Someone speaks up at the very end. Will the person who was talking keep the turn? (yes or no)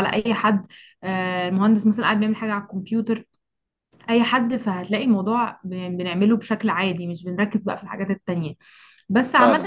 yes